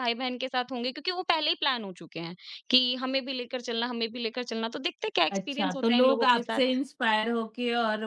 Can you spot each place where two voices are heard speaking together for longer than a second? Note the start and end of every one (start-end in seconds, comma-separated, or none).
5.3-6.8